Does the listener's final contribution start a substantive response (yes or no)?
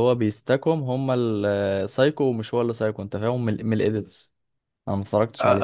yes